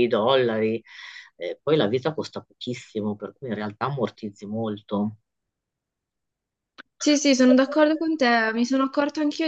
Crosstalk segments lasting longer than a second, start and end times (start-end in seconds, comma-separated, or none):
none